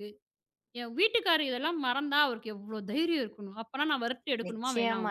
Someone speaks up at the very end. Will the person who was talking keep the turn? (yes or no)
no